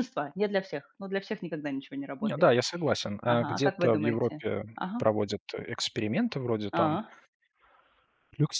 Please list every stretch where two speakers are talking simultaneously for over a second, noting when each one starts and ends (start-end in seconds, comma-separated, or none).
3.3-5.0